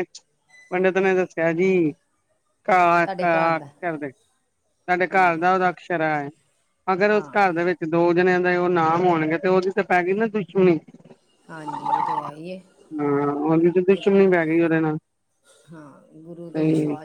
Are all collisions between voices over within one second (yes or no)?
yes